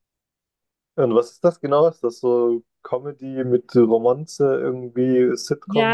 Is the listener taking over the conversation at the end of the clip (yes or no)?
yes